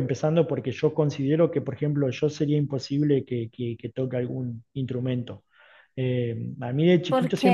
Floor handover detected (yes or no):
no